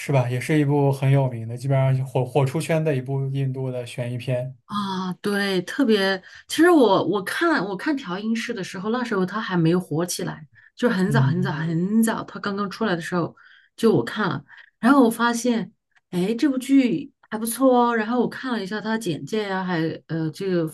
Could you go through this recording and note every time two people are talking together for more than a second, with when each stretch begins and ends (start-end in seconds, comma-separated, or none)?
none